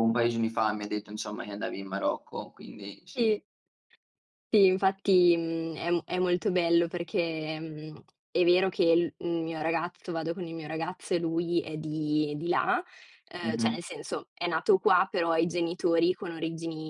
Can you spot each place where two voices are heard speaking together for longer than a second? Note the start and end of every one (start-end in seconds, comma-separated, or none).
none